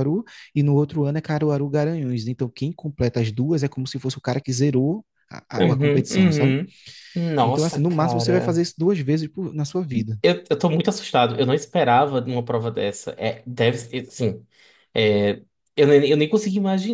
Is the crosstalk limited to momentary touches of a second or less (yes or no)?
no